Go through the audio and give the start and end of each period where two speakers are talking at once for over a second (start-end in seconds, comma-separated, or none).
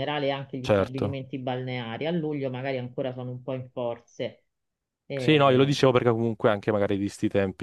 none